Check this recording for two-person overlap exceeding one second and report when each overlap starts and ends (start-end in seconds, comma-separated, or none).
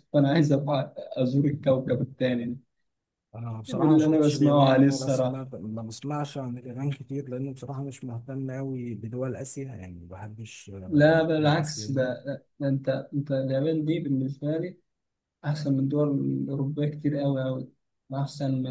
3.7-5.5, 10.9-12.1